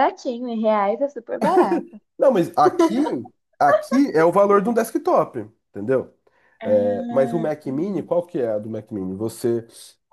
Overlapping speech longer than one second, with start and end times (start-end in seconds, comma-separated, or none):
6.6-8.1